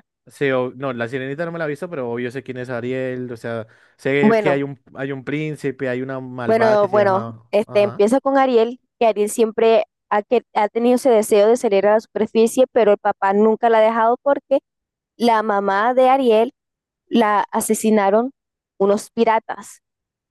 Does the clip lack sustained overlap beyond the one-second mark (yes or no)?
no